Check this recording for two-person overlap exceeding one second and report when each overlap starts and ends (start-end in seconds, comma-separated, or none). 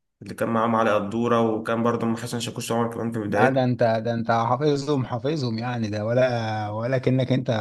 none